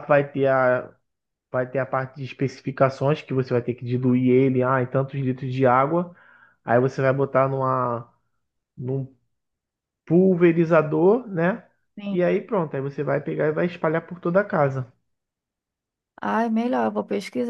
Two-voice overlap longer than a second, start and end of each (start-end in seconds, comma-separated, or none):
none